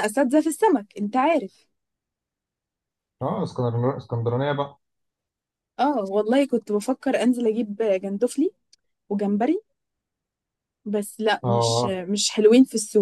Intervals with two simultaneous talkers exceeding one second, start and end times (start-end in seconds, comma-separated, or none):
none